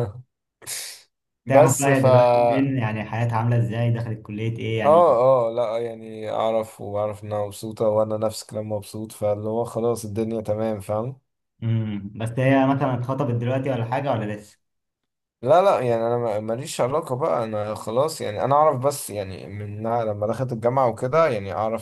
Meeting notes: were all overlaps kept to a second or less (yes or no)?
no